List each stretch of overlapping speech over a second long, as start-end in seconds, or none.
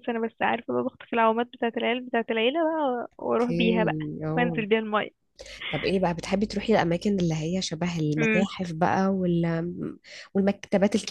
none